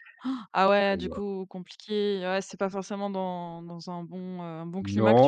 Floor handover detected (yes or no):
yes